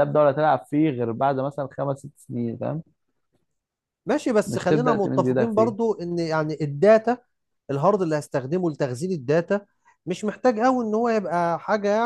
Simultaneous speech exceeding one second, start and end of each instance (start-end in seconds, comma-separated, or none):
4.5-5.8